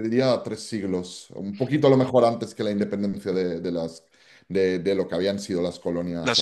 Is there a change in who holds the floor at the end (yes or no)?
yes